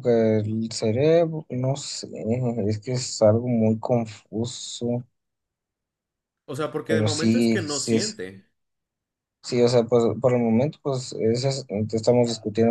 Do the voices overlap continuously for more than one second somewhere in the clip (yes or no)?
yes